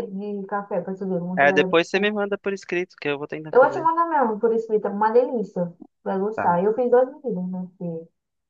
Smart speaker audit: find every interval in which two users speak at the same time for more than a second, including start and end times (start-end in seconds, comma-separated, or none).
none